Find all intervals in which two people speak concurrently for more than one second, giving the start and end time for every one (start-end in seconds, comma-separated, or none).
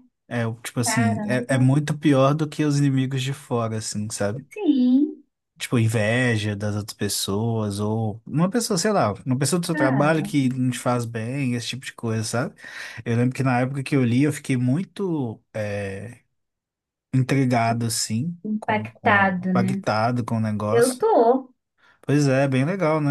18.4-19.8